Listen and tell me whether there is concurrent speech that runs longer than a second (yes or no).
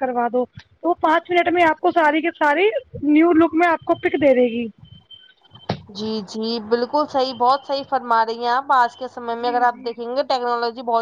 no